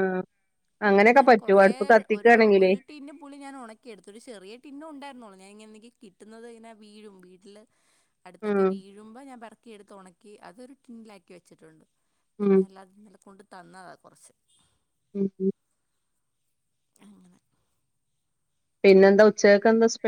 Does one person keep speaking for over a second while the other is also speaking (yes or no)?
no